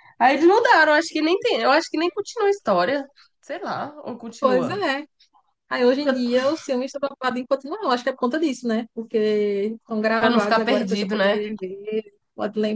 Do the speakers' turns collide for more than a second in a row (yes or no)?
yes